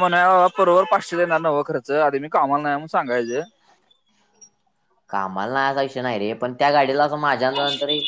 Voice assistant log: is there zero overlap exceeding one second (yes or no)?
yes